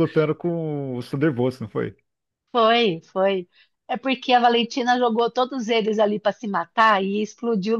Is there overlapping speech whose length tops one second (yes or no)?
no